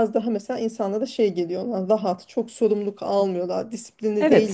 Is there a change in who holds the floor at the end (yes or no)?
yes